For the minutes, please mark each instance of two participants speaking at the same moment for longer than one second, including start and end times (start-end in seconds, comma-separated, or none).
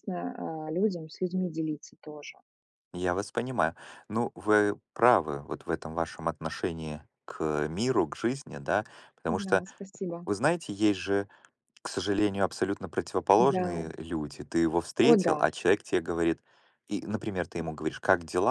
none